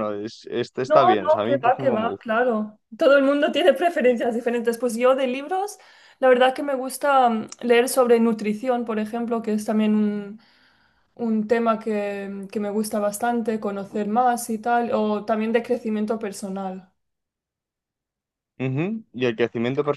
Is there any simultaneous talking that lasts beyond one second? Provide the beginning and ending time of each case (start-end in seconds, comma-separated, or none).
0.8-2.3